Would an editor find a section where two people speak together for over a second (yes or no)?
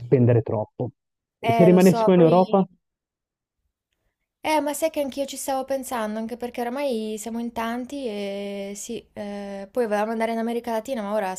yes